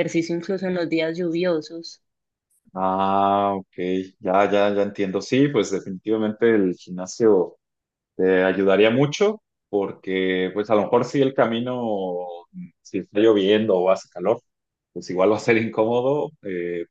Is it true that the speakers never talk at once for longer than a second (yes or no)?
yes